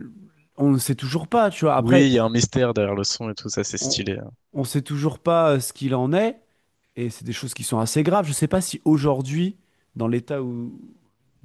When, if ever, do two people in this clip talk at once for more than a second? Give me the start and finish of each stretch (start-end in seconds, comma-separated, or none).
none